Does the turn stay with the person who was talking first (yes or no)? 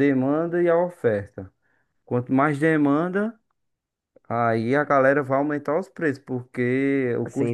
no